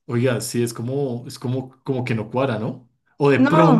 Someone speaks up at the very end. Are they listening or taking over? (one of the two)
listening